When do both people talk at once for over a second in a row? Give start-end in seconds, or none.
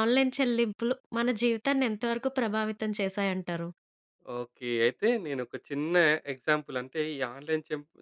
none